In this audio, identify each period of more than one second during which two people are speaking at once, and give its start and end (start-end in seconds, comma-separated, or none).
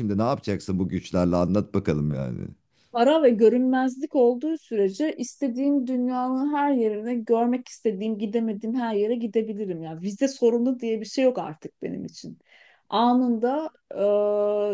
none